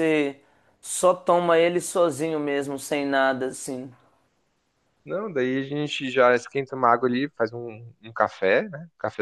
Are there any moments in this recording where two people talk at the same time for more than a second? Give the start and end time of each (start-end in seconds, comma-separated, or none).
none